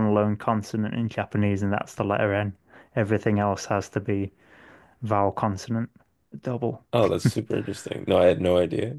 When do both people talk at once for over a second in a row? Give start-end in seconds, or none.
none